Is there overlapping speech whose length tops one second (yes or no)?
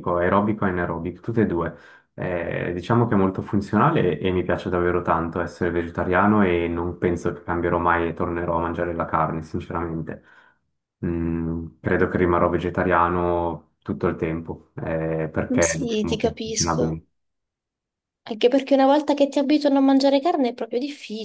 yes